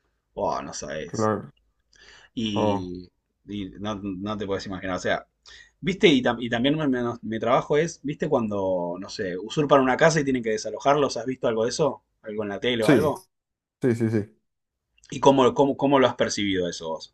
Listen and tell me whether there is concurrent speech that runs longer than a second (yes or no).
no